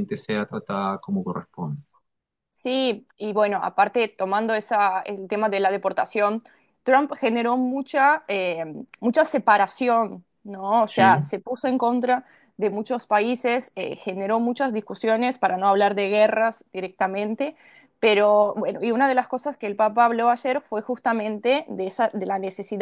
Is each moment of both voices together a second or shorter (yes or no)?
yes